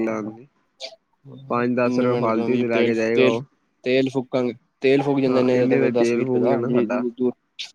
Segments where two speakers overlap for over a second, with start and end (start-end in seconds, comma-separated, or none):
1.9-3.4, 5.3-7.0